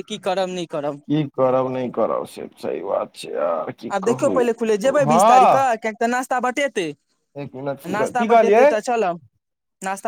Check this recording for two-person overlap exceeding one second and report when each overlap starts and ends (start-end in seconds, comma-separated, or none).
none